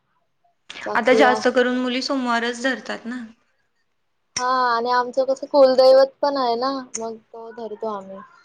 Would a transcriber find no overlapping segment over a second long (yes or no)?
yes